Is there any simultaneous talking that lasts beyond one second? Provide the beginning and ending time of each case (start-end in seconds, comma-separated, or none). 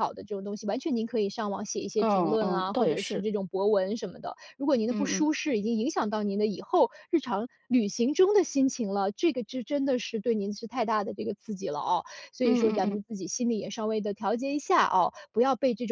2.0-3.2